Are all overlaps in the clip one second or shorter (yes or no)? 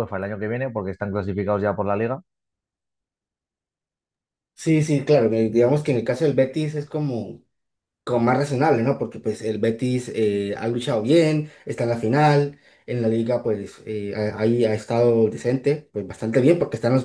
yes